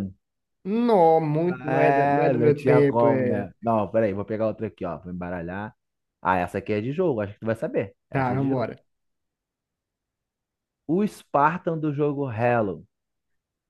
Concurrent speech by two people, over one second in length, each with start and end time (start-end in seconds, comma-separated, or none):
1.7-3.5